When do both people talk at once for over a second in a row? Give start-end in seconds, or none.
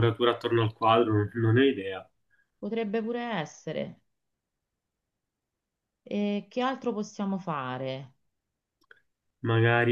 none